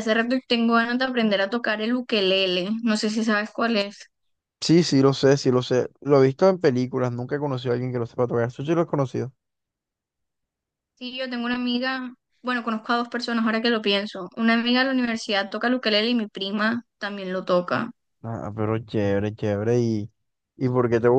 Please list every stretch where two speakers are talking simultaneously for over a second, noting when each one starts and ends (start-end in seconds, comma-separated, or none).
none